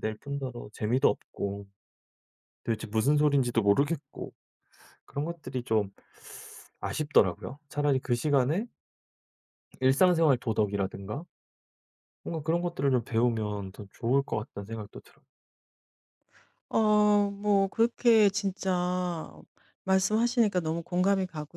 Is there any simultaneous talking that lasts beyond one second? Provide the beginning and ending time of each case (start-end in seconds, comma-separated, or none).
none